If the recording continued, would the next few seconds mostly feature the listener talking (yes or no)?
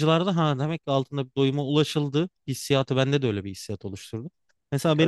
no